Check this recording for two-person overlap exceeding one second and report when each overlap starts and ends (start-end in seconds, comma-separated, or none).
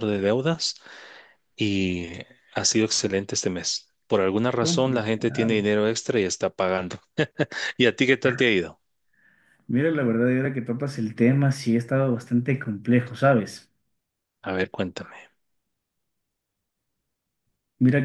4.5-5.7